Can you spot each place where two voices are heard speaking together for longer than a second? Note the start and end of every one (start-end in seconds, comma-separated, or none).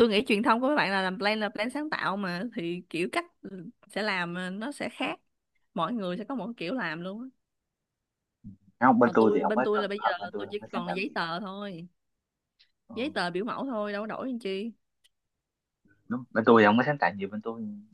9.0-11.2